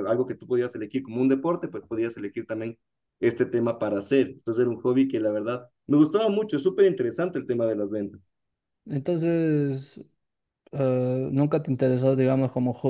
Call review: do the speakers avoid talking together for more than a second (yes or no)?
yes